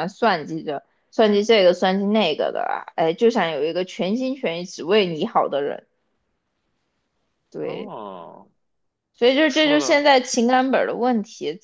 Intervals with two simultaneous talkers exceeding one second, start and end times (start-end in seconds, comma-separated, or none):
none